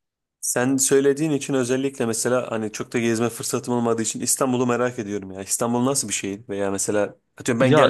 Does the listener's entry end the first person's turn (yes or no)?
no